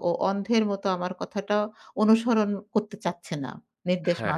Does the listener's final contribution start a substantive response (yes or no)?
yes